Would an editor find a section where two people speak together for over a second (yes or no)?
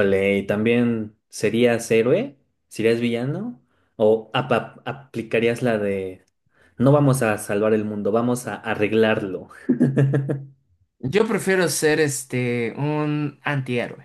no